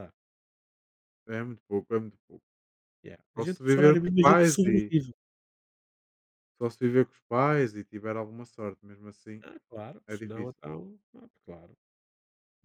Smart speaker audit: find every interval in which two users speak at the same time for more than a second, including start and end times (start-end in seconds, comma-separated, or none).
3.4-4.9